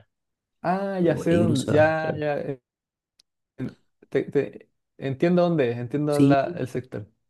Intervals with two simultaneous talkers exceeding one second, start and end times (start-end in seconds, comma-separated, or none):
1.0-2.2